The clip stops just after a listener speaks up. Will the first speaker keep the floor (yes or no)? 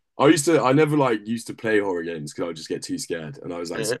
yes